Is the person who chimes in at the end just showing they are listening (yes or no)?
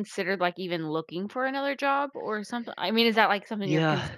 no